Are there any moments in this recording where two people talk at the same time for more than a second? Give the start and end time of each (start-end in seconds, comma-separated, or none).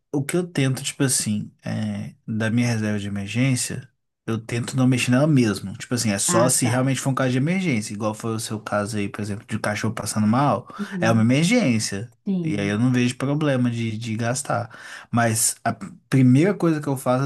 none